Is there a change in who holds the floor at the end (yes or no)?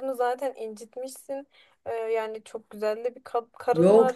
yes